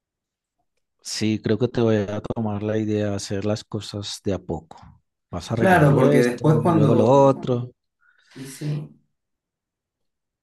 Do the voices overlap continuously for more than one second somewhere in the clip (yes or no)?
yes